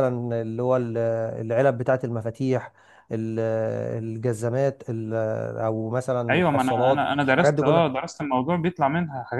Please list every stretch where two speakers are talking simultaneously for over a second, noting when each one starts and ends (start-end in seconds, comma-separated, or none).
6.3-7.9